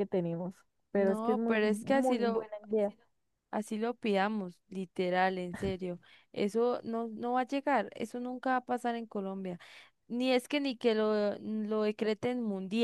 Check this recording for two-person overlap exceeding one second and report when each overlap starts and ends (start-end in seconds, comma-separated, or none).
0.9-2.5